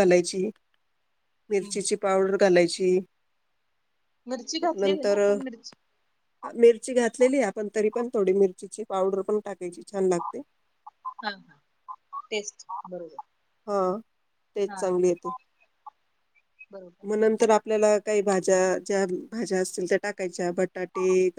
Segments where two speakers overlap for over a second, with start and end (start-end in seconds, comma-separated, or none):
none